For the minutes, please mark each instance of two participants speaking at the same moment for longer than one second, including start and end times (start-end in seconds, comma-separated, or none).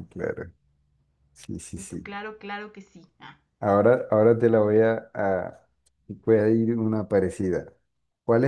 none